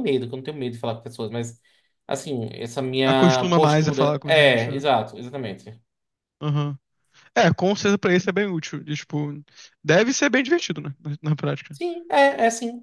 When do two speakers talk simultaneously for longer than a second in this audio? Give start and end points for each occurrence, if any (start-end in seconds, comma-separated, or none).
3.0-4.8